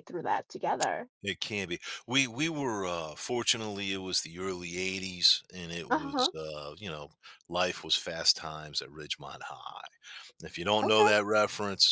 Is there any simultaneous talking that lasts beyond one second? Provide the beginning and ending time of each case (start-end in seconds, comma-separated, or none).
none